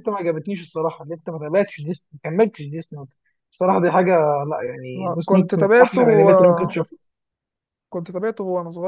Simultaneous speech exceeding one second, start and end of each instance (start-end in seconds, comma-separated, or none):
5.0-6.8